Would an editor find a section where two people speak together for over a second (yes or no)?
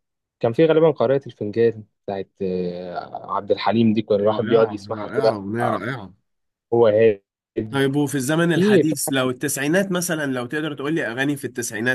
yes